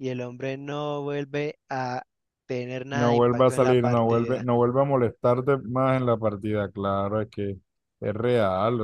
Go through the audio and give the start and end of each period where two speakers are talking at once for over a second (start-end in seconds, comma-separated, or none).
2.9-4.5